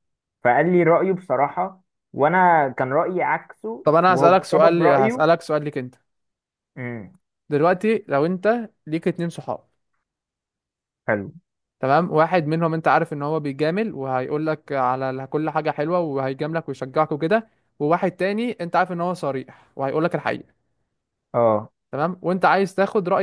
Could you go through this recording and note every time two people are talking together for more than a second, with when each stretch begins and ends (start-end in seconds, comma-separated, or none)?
3.8-5.3